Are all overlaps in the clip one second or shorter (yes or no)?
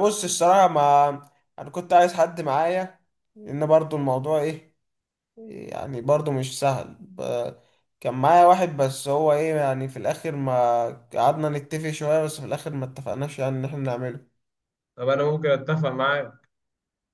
yes